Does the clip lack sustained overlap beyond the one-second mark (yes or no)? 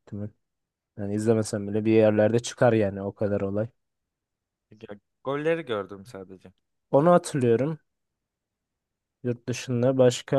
yes